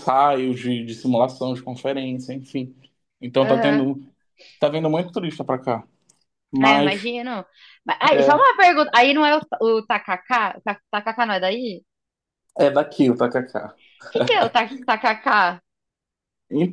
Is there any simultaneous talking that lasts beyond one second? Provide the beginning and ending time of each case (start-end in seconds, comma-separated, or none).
none